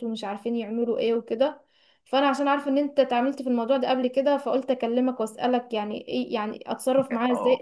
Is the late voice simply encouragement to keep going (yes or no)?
no